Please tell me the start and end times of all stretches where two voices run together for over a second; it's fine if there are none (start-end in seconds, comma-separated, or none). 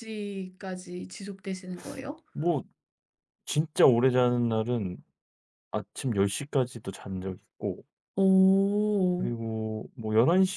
none